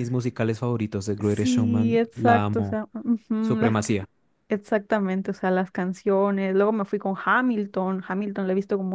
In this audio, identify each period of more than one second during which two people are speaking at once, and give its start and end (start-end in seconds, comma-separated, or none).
1.2-2.8